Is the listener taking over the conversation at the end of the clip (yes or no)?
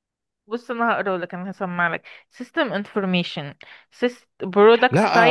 yes